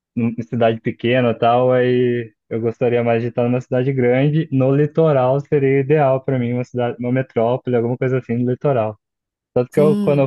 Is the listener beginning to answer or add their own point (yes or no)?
no